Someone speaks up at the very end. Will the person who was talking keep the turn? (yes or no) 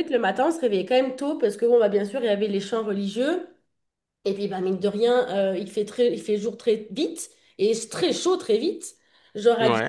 yes